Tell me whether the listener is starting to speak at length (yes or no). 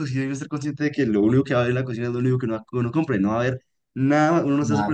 yes